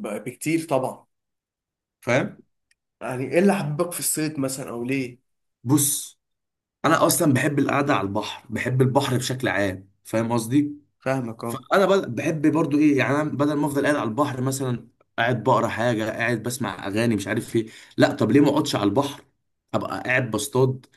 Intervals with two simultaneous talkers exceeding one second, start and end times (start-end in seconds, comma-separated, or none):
none